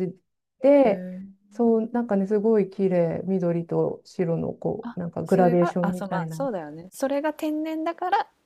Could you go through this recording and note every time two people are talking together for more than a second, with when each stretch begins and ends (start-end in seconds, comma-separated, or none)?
4.8-6.4